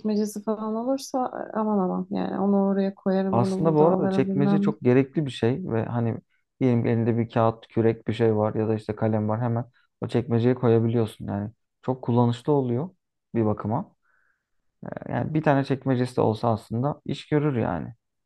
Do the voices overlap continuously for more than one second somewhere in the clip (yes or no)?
yes